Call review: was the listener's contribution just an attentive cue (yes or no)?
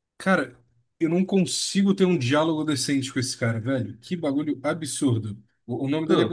yes